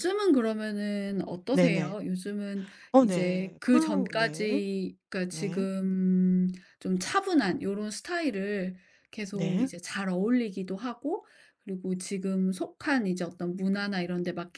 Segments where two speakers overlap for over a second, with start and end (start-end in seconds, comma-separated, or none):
2.9-4.7